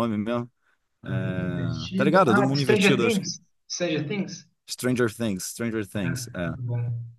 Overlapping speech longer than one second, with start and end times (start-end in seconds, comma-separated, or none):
1.1-3.3